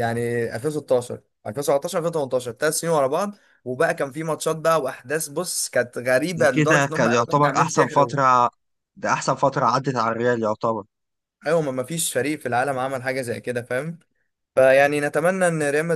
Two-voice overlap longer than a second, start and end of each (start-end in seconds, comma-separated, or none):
6.4-8.2